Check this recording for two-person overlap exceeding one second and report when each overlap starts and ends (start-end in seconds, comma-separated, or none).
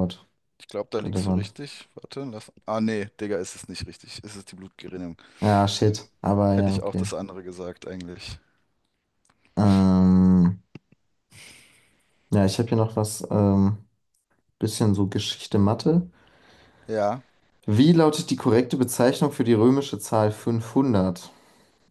none